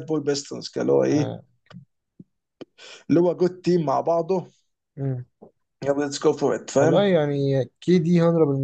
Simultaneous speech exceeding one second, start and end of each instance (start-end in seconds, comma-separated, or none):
none